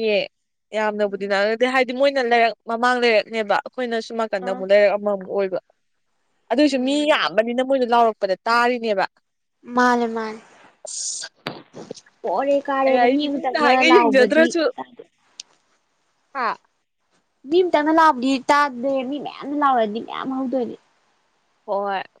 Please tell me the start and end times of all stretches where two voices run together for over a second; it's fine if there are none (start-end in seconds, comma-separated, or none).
12.8-14.5